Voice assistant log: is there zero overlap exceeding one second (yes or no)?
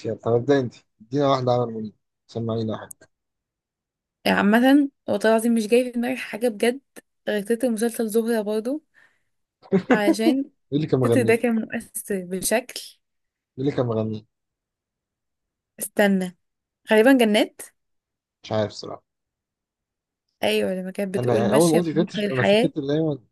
no